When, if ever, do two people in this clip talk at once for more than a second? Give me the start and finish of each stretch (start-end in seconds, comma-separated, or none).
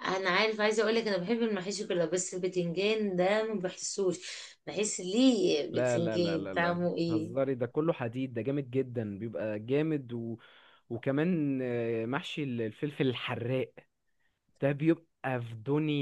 5.7-7.4